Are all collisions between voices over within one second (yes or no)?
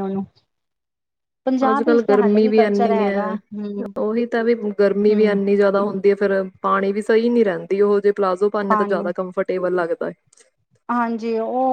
no